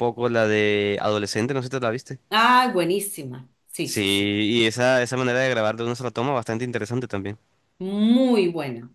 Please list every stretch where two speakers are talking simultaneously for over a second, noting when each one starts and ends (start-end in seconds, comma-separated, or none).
none